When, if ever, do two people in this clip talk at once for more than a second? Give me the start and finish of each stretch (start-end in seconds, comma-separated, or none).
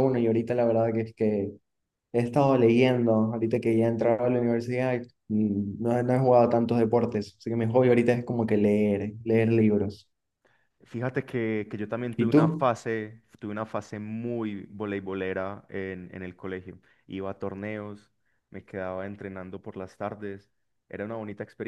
none